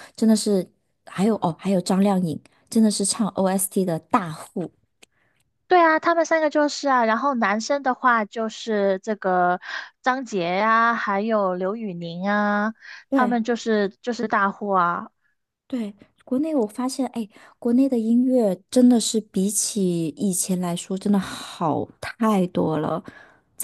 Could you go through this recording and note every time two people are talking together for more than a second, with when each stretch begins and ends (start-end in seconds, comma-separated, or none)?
none